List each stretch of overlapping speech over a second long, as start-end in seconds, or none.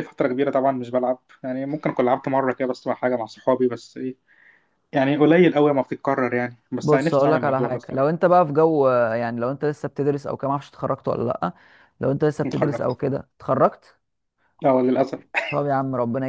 6.8-8.1